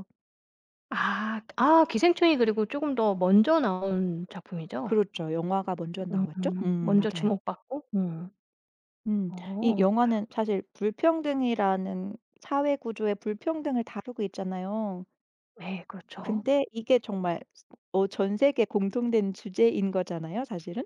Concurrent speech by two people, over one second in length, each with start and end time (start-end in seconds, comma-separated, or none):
6.1-7.3